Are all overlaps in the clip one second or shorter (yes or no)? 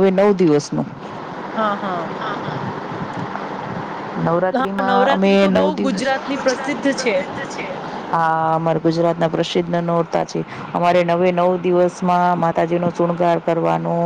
no